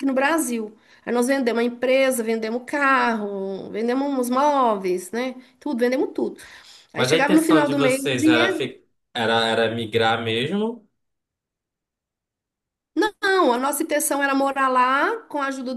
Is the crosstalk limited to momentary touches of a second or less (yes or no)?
no